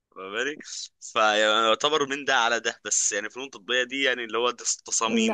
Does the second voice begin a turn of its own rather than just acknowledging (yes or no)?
yes